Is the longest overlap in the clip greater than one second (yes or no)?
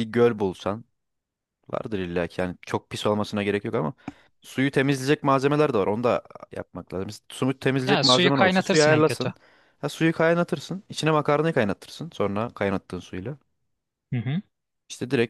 yes